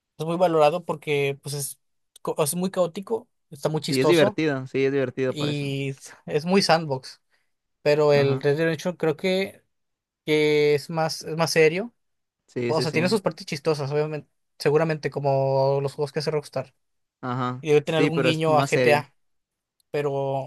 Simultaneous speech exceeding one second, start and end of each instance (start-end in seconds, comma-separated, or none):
17.6-19.1